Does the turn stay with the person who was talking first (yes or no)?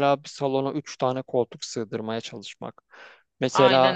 yes